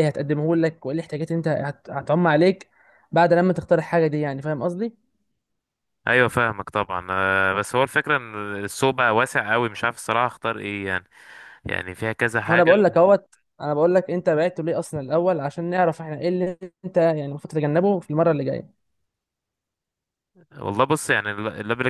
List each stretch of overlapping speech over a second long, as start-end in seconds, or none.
none